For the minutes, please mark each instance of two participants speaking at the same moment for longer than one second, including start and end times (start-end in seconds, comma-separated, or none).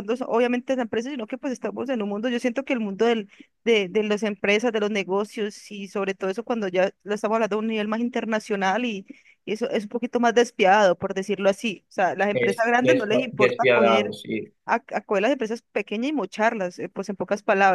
12.3-14.1